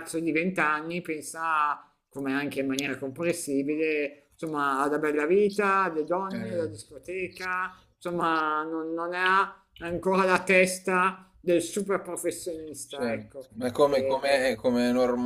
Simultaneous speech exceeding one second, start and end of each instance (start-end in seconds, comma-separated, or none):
12.9-14.3